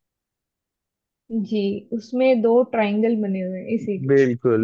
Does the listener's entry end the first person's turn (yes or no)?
yes